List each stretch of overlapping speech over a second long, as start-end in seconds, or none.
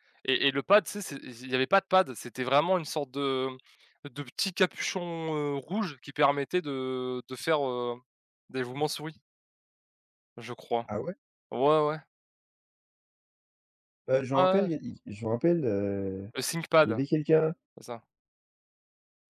none